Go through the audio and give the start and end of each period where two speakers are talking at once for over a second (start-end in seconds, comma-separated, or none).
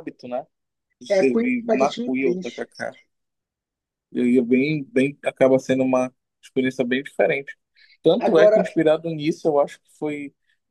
1.1-2.7